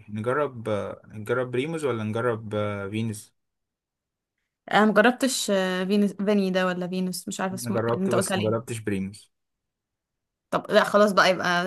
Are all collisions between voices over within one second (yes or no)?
no